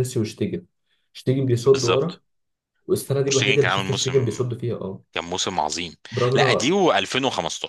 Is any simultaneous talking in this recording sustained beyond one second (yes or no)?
yes